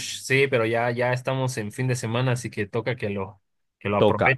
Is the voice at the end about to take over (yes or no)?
yes